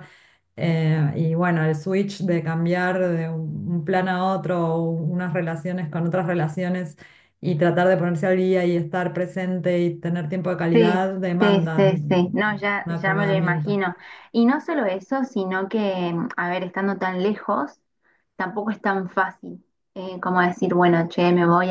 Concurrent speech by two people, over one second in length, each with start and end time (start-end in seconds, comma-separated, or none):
10.7-13.8